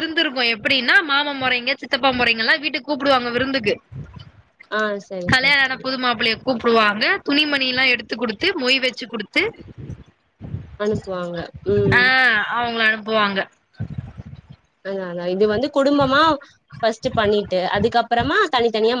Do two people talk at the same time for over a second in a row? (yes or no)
no